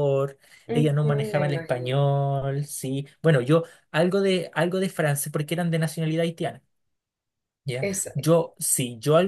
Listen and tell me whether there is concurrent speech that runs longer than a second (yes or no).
yes